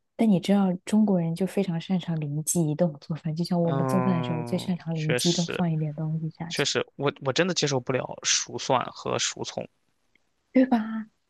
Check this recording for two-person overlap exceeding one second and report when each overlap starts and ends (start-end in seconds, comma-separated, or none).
3.6-5.6